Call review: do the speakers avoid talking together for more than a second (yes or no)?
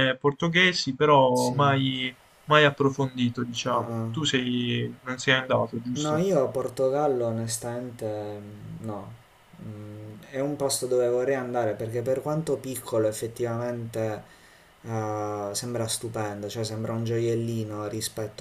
yes